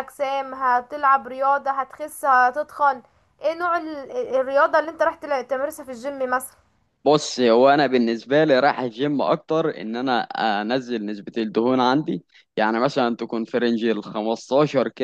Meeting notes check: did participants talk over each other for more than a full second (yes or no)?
no